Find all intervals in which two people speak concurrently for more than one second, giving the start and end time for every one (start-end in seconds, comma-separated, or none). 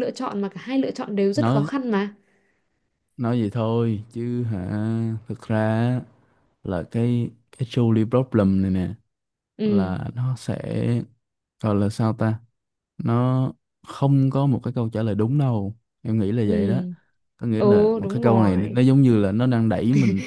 17.6-18.8